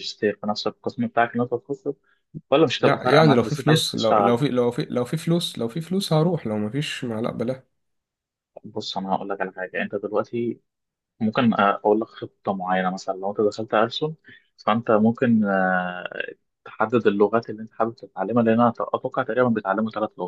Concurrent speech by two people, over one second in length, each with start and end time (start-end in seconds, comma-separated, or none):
2.8-4.4